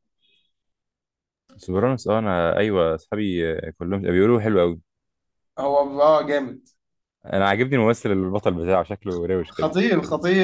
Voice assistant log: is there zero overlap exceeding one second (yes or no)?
yes